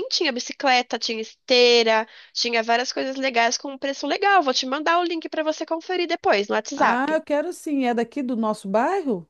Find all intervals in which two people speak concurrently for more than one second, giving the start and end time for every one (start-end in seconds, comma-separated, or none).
none